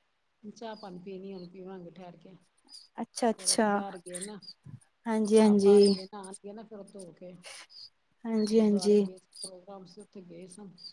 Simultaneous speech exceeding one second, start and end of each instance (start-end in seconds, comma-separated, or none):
none